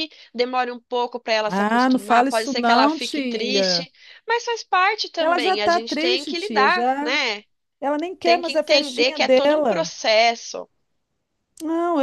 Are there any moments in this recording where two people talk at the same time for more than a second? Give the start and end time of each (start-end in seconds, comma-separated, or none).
1.5-3.9, 5.2-7.1, 8.2-9.9